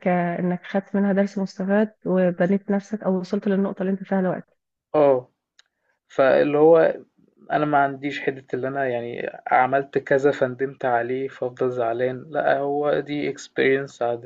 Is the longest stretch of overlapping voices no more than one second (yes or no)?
yes